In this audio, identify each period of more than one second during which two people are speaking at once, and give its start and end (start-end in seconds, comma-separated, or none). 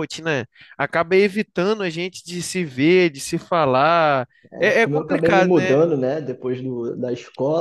4.5-5.8